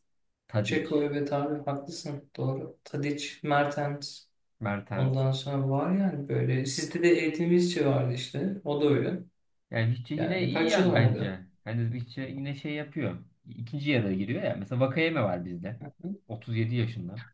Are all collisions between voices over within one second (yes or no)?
no